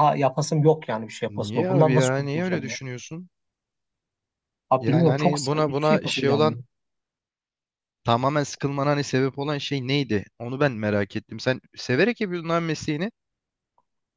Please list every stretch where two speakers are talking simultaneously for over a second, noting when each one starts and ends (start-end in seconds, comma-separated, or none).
1.4-2.8, 4.8-6.6